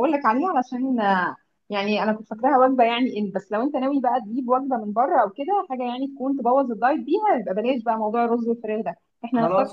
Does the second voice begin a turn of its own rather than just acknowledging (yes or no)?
yes